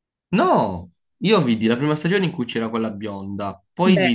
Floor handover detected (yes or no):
no